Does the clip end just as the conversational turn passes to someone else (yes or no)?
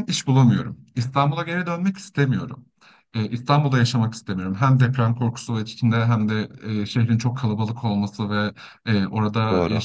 no